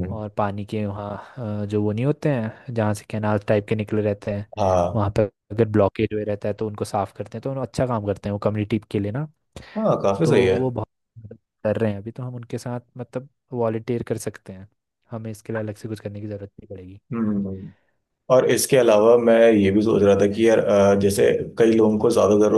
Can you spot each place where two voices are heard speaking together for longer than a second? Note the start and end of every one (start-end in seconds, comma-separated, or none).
none